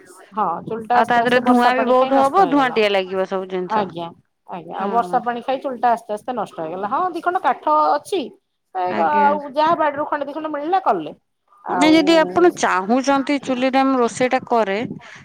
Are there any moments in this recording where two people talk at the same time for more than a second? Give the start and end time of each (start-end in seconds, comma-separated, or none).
1.0-2.8